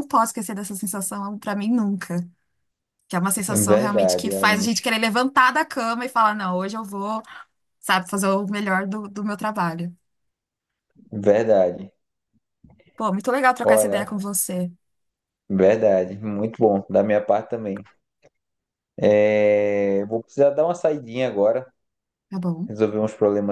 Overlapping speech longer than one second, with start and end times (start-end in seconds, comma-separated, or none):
3.5-4.7